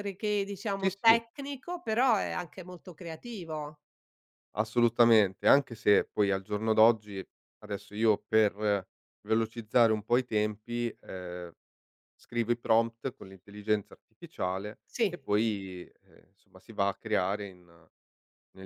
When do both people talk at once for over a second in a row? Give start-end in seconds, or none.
none